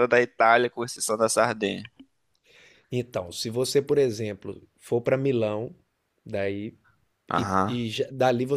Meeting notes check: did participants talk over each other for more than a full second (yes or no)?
no